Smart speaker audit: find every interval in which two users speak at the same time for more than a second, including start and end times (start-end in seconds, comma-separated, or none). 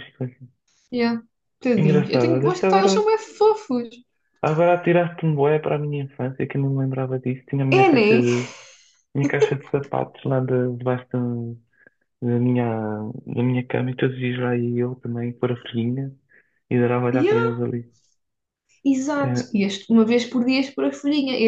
1.8-3.1